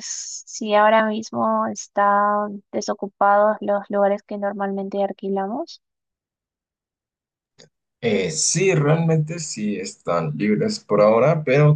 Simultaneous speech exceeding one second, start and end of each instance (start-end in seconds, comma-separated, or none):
none